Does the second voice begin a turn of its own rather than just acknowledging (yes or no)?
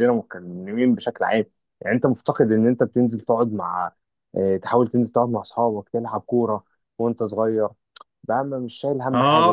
yes